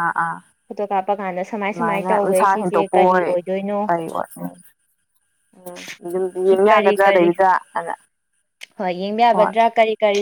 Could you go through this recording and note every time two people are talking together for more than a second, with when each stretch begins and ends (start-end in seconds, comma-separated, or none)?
1.7-3.3